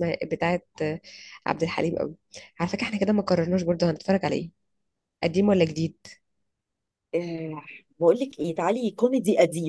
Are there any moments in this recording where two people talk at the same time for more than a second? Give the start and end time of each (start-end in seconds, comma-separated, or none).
none